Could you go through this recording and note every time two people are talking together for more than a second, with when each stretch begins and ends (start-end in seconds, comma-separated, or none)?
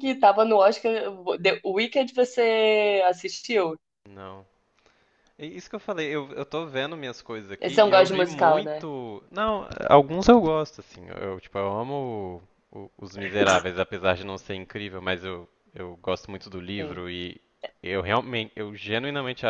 7.6-8.9